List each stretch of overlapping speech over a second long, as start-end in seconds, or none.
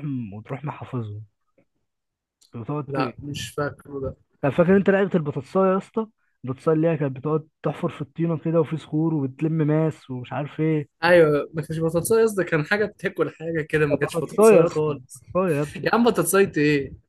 13.9-15.2